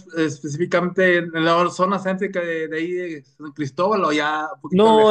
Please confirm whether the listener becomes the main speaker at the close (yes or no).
yes